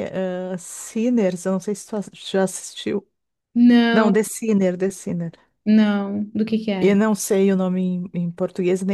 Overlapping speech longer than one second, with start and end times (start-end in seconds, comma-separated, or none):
none